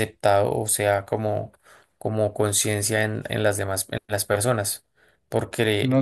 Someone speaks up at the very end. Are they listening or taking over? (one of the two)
listening